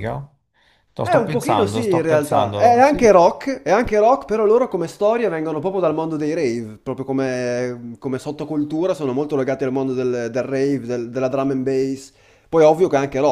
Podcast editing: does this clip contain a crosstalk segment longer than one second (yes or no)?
yes